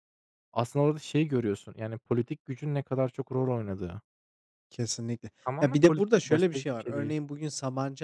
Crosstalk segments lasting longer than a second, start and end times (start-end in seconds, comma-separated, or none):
5.5-7.1